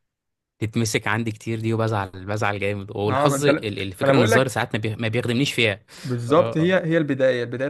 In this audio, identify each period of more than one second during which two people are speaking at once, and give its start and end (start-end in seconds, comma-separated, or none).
3.1-4.6